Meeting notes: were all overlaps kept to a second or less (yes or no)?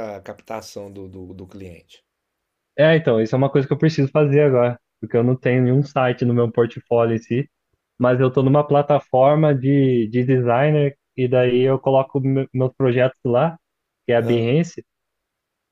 yes